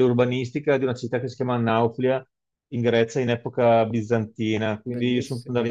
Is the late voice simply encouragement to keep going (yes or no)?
yes